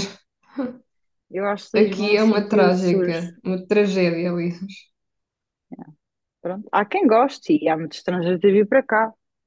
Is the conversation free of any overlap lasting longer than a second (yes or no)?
no